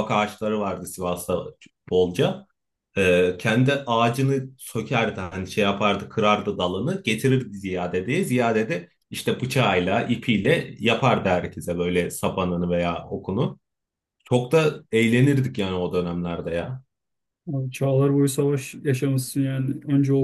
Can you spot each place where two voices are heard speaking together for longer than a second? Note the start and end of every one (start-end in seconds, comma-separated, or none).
none